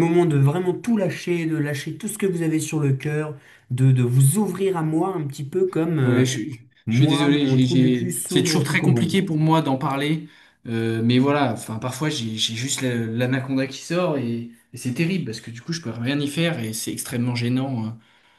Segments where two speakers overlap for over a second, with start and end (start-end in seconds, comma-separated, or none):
6.8-9.2